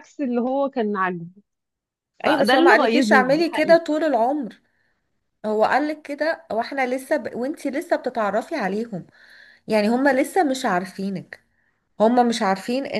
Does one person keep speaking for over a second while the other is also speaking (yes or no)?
yes